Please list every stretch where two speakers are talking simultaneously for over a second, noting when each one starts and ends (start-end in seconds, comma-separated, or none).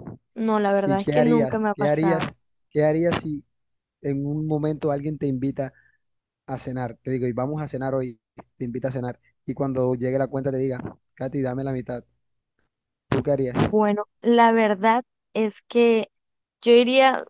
0.8-2.2